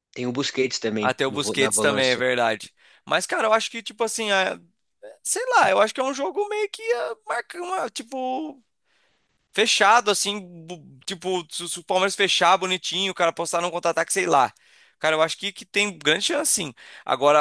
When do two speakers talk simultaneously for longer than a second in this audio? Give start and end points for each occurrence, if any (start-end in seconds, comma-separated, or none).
1.0-2.3